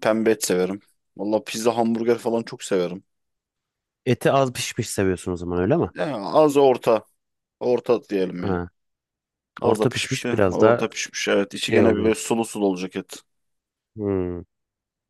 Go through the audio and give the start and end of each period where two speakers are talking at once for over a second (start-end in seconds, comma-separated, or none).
9.6-10.8